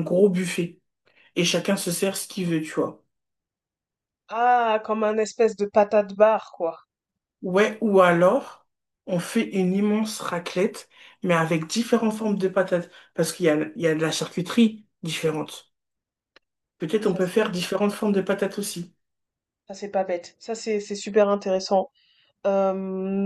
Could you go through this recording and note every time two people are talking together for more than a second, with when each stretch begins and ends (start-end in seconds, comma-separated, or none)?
none